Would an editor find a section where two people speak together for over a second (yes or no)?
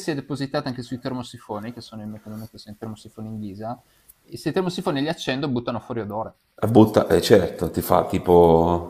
no